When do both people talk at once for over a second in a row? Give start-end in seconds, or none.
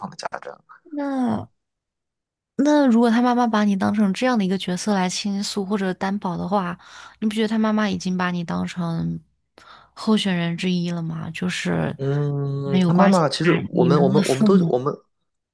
12.6-14.8